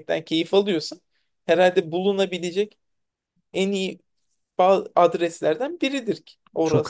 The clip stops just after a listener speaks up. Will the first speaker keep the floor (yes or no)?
no